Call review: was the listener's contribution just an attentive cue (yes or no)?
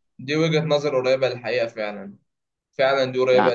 yes